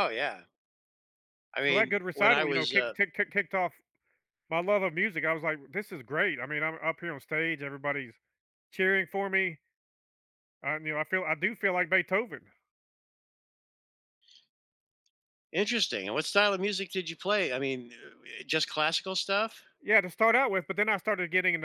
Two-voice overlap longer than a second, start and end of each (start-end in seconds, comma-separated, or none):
1.6-2.9